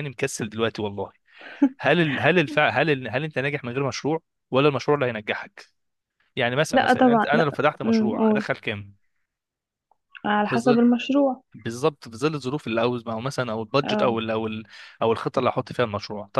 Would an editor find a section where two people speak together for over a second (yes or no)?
yes